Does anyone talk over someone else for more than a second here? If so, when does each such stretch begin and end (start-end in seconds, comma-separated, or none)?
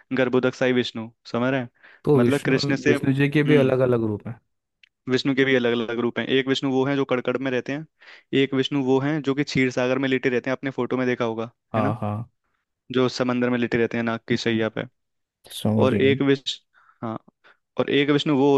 2.1-3.8